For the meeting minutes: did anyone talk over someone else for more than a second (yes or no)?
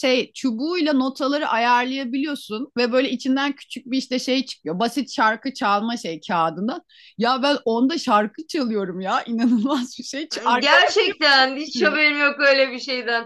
yes